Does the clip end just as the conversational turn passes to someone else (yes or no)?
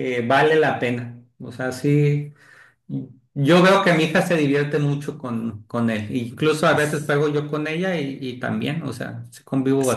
yes